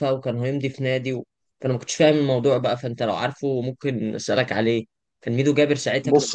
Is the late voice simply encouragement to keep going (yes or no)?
yes